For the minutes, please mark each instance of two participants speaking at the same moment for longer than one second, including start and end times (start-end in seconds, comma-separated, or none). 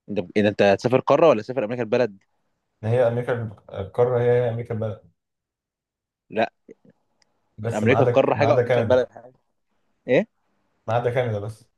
7.8-9.0